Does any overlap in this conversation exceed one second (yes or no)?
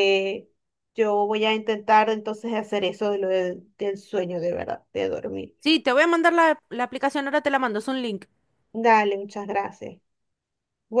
no